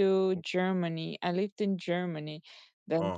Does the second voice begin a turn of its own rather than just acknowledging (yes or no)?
no